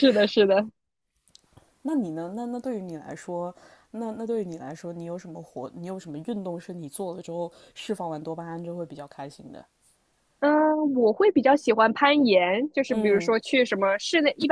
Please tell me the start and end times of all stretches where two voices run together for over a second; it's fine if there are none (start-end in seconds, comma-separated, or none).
none